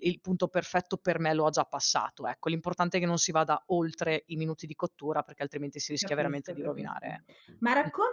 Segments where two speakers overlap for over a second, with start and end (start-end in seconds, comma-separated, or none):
6.0-7.2